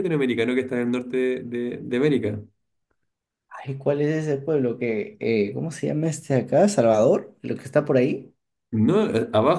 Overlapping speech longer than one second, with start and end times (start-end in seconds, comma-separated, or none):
none